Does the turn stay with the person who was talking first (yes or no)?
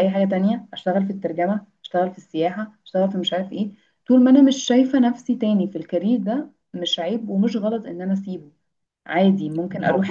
yes